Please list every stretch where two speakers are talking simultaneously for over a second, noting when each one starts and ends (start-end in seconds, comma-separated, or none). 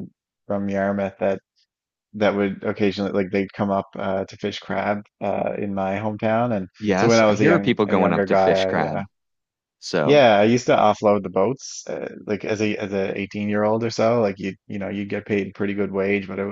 6.8-9.0